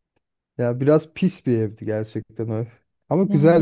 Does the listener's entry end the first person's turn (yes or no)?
yes